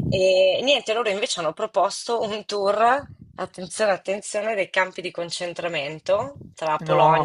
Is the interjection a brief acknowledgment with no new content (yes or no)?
yes